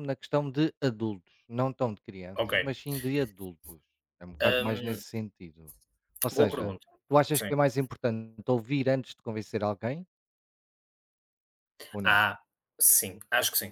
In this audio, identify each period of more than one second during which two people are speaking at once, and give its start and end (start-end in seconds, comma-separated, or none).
none